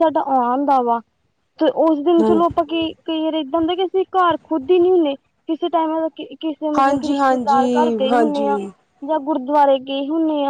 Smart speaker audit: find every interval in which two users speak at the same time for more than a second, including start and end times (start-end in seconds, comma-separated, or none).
6.8-8.6